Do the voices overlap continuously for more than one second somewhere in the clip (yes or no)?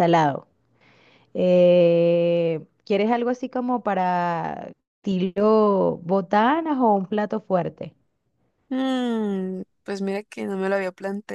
no